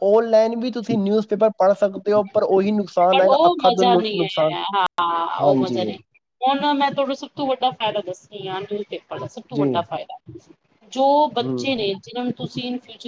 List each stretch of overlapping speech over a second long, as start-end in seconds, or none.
2.2-4.5